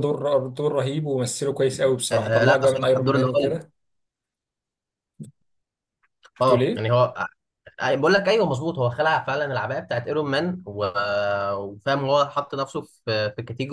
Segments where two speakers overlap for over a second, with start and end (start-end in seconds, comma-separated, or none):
2.1-3.6